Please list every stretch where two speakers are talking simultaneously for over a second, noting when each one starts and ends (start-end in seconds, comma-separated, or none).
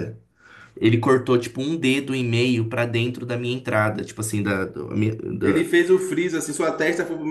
none